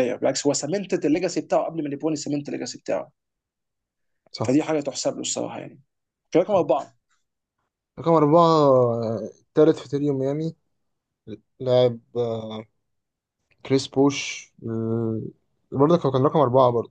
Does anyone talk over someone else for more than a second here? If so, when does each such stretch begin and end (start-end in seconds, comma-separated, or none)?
none